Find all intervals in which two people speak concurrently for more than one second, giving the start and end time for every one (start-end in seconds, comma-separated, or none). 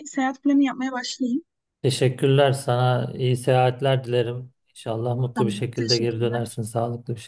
5.3-6.6